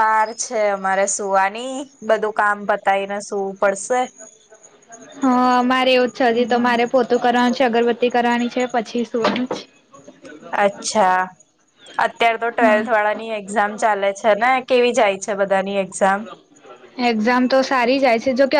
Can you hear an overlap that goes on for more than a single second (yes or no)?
no